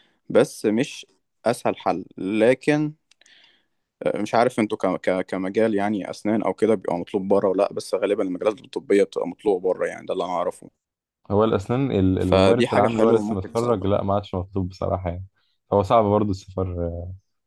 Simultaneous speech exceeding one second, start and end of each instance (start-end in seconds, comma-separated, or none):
12.2-13.9